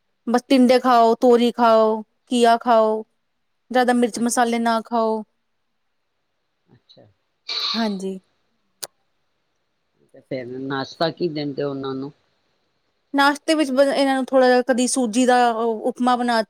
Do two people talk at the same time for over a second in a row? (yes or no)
no